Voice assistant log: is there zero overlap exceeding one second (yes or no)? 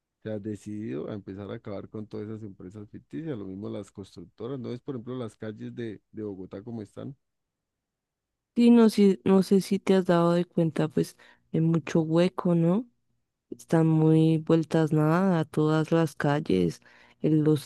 yes